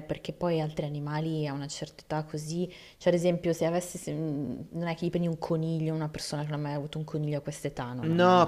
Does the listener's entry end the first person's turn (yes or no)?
yes